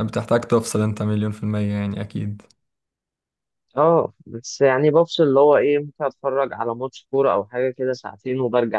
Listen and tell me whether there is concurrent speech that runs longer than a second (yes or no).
no